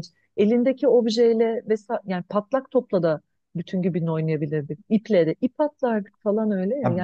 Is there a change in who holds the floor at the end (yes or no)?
yes